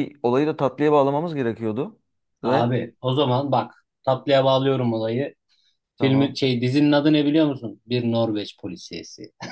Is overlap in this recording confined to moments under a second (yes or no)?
yes